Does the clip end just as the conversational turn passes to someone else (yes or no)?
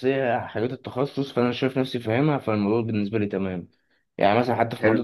no